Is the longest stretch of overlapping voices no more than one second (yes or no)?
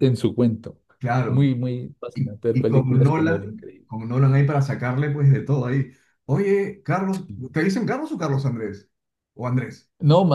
no